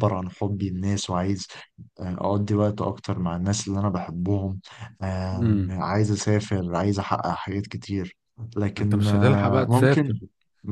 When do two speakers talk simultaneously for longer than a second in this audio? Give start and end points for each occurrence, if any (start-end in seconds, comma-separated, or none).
8.8-10.2